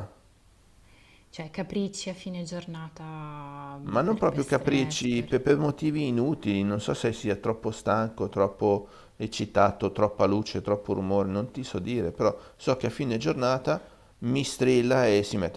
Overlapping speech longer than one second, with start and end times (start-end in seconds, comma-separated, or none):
3.9-5.3